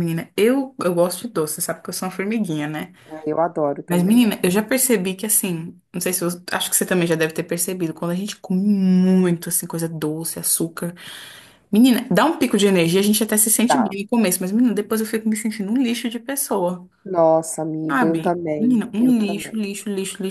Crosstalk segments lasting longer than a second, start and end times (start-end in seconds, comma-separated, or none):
17.9-19.6